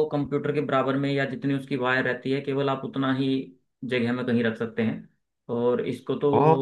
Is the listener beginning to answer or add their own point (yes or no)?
no